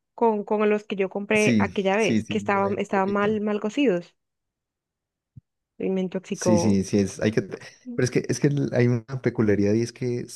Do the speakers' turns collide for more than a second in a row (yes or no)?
yes